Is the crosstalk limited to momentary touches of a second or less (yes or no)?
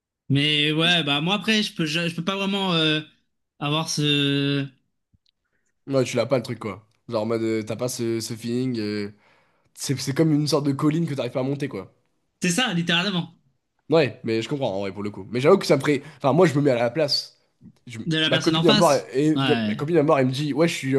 no